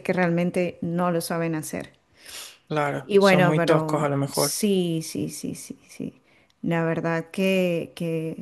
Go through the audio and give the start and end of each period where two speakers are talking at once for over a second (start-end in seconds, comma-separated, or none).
3.0-4.6